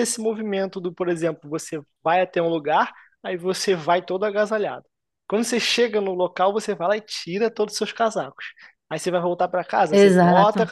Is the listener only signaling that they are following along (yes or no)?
yes